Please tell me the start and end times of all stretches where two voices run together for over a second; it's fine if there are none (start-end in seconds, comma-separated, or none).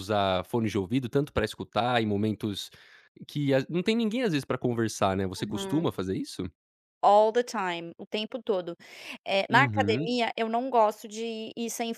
none